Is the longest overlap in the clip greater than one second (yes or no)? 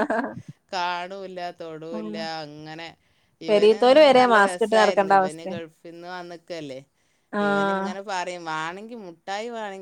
yes